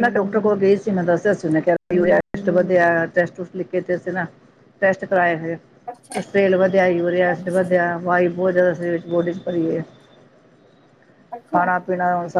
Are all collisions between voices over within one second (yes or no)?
no